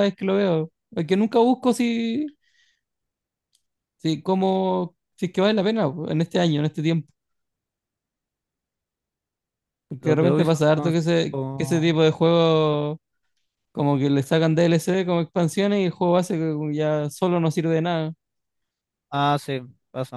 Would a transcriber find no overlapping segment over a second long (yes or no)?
no